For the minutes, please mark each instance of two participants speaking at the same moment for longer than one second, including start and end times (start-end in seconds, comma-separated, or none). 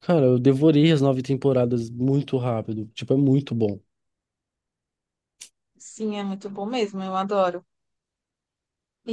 none